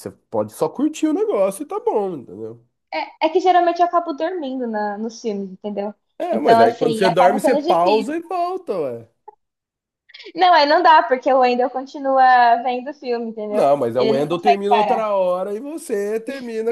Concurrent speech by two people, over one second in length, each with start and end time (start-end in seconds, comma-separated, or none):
6.3-8.1, 13.5-15.1